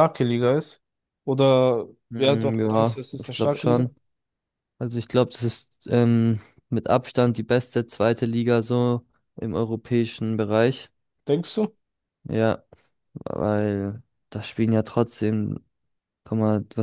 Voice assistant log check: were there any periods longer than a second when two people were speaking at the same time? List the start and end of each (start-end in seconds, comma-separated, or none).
2.1-3.9